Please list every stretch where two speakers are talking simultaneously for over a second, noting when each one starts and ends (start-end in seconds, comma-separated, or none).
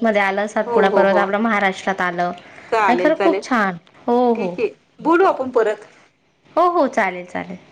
none